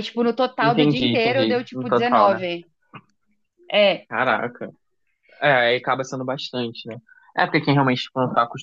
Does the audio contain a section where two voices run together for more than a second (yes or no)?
yes